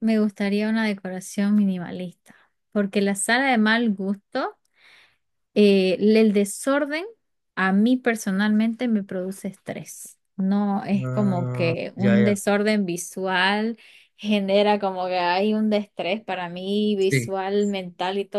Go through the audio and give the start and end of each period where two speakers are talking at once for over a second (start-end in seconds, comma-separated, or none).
11.0-12.5